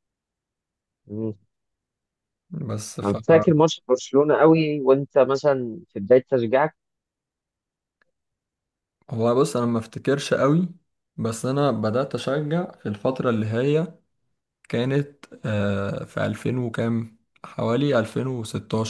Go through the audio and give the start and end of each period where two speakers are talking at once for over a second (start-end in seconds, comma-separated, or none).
none